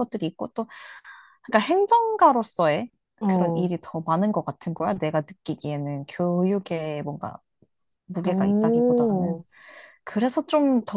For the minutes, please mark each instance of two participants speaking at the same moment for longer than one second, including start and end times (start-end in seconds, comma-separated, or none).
8.2-9.4